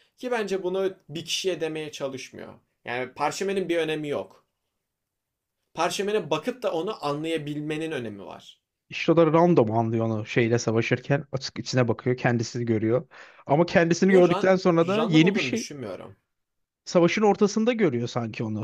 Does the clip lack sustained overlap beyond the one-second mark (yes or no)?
no